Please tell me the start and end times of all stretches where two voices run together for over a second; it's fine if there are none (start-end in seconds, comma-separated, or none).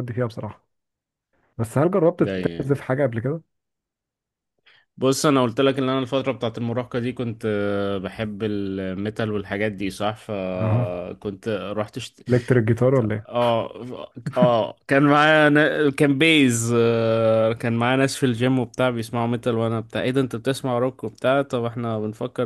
none